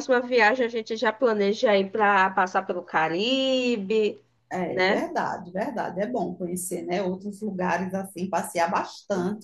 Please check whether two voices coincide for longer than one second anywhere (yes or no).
no